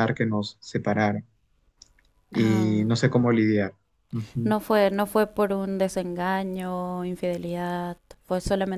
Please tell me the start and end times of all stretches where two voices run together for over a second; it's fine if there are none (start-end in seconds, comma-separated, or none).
none